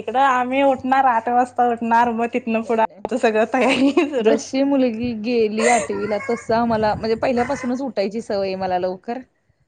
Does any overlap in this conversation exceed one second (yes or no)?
no